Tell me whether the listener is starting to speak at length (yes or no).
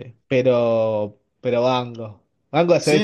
yes